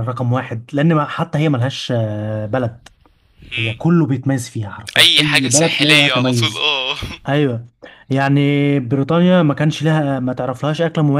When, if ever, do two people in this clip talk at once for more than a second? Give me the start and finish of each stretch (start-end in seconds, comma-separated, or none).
5.0-6.7